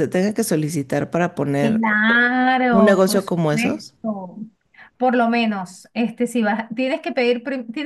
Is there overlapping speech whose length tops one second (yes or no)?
yes